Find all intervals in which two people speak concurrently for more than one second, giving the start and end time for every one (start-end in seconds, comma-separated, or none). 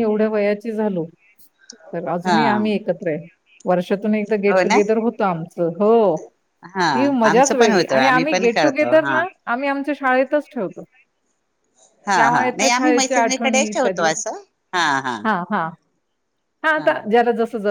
7.3-9.1, 12.2-14.1